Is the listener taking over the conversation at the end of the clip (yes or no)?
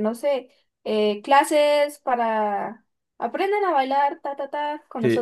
yes